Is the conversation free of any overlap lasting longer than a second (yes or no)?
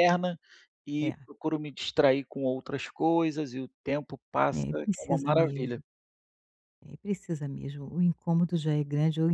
no